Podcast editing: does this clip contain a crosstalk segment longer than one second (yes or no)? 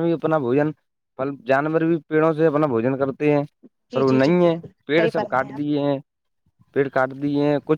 yes